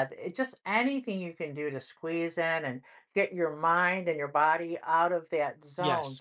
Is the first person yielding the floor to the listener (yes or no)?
no